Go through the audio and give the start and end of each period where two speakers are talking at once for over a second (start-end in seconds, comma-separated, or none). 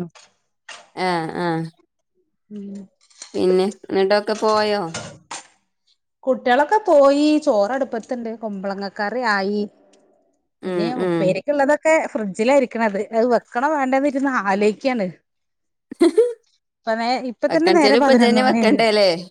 17.5-18.8